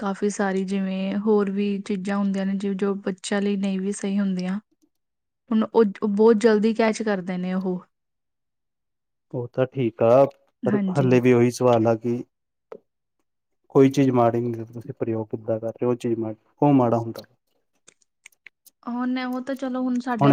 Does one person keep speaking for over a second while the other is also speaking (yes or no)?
no